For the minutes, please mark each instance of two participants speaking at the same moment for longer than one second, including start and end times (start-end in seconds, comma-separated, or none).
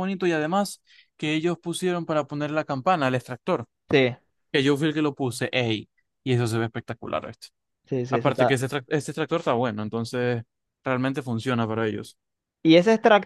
none